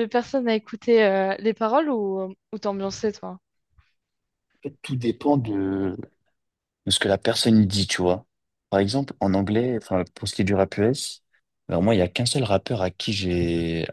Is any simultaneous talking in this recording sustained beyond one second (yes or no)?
no